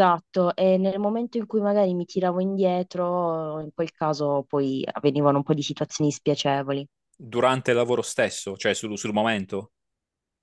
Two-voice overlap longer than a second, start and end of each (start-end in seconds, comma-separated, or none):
none